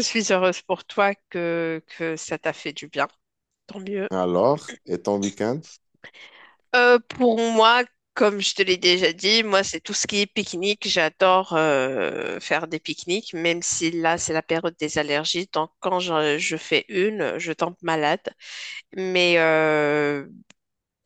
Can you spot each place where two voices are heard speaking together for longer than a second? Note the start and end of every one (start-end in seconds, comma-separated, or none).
none